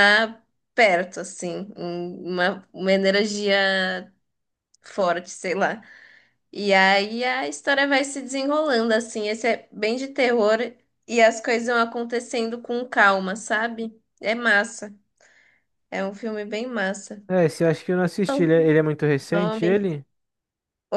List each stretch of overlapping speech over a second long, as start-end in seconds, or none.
none